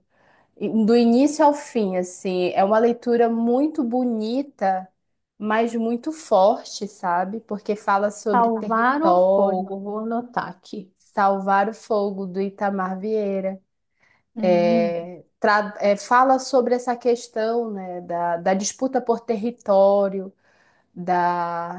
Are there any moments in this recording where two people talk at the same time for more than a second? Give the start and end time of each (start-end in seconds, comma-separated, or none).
8.3-9.7